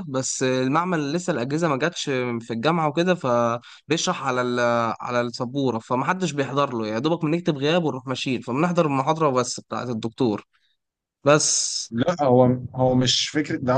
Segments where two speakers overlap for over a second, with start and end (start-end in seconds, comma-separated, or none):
none